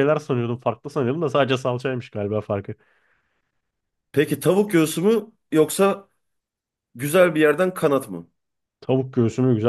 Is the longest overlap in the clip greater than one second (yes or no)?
no